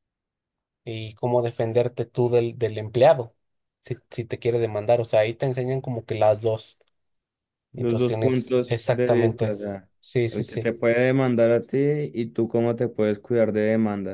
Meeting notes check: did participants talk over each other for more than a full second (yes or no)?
yes